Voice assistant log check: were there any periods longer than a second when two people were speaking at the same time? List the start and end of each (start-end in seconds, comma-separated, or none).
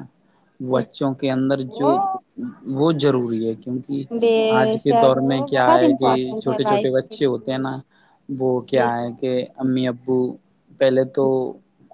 4.9-7.7